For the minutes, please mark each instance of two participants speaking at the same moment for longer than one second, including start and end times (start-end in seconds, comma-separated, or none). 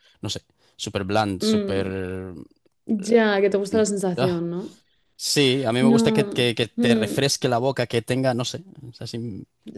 5.8-7.2